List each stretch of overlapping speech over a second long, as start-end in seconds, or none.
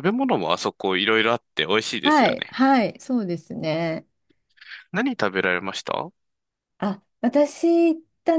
none